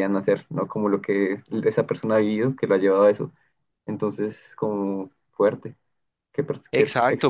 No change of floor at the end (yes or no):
no